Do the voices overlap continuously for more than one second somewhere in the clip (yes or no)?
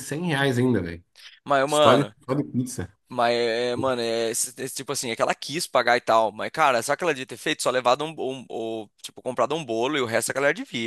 no